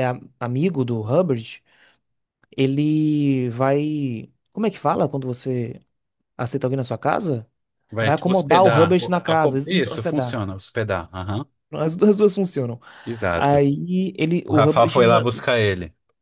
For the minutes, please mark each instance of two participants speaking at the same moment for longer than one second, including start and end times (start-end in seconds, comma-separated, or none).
8.0-10.4